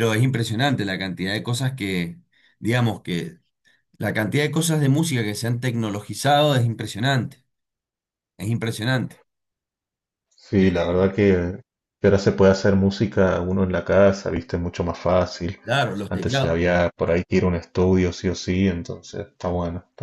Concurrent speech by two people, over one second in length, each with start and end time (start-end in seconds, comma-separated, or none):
none